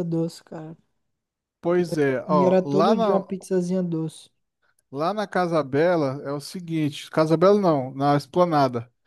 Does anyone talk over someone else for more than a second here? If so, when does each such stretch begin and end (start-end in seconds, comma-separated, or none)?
1.7-3.2